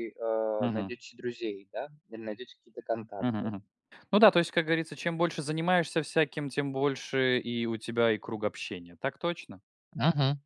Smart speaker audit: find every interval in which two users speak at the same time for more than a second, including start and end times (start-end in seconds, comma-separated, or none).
none